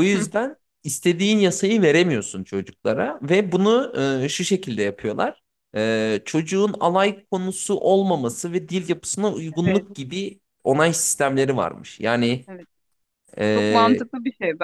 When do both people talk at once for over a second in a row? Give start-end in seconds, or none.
none